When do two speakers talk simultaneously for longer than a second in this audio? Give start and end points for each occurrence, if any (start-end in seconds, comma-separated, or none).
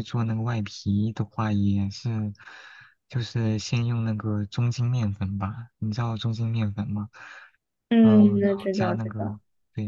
8.0-9.4